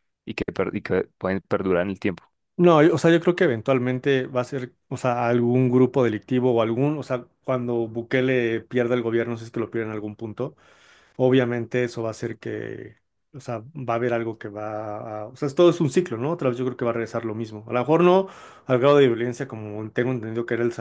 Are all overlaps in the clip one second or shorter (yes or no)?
yes